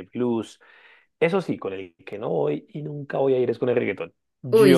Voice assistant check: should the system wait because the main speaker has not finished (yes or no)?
yes